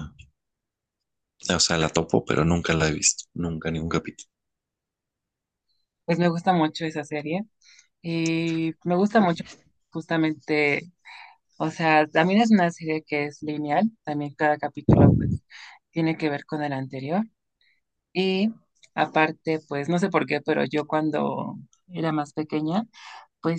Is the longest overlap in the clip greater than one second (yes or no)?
no